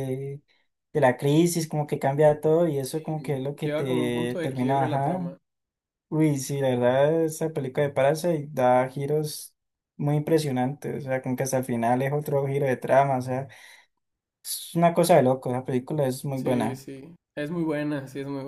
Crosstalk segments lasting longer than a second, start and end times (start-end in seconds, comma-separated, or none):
2.9-5.2